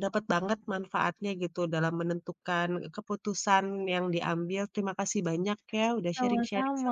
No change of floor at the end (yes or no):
no